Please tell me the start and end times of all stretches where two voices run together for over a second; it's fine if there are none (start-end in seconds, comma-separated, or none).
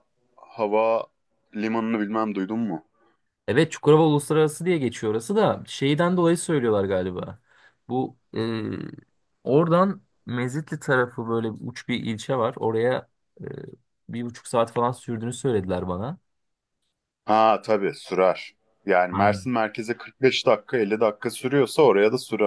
none